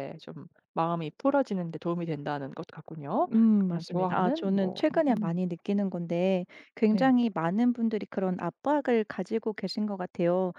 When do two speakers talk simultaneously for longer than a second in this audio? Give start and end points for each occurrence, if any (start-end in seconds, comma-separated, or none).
3.3-5.4